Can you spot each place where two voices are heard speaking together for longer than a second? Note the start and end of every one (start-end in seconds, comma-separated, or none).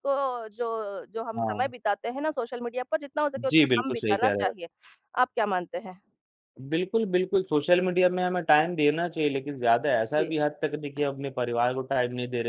3.4-4.7